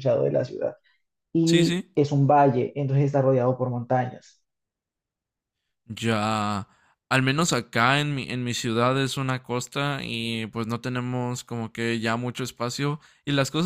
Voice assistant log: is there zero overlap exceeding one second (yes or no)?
yes